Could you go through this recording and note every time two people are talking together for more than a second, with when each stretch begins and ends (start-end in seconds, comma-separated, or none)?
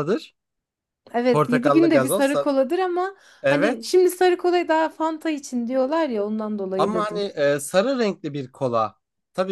1.3-2.5